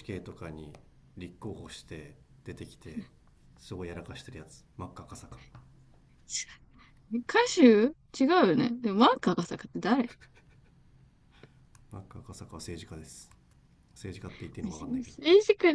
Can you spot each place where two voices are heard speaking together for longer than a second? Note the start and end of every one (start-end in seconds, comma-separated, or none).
none